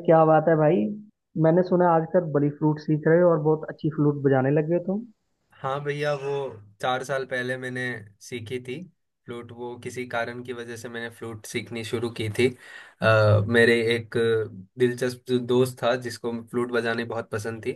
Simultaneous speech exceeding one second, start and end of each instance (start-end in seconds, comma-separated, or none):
none